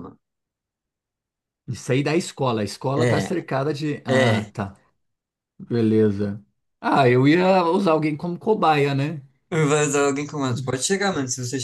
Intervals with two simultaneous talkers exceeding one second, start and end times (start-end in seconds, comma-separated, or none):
none